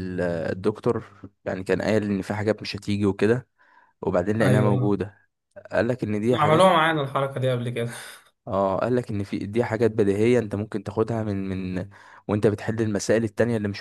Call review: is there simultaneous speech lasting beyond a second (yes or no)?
no